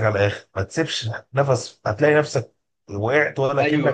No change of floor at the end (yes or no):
no